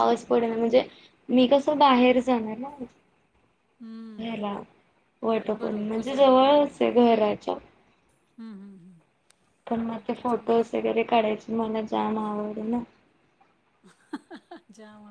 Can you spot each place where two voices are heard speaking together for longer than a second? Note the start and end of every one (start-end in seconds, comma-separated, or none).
5.6-6.9